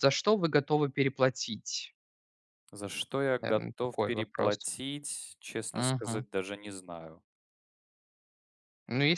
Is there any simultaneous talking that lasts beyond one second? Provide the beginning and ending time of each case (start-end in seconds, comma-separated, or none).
3.4-4.7